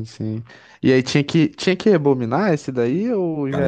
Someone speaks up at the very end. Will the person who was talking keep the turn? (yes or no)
no